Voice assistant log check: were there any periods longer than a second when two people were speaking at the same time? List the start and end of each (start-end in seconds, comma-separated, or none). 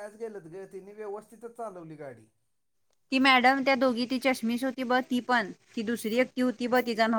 none